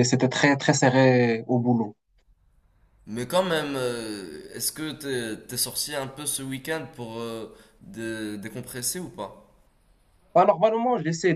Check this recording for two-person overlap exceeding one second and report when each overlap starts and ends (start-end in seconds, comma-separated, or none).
none